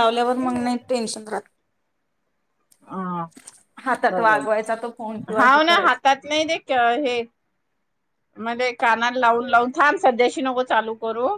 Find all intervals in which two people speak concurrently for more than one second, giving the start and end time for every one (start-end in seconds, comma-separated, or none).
4.1-6.2